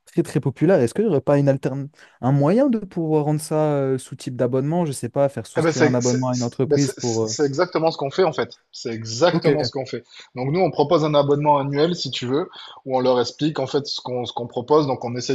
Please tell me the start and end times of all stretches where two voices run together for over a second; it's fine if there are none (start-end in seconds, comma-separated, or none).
5.6-7.4